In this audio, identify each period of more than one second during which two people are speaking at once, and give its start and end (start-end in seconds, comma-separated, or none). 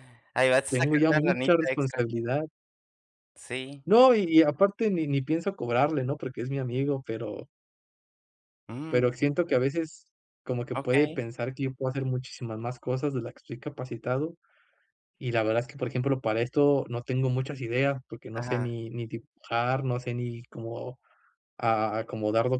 0.7-2.0